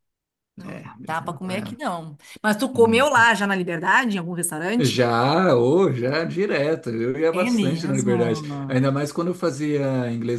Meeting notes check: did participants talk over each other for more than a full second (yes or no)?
yes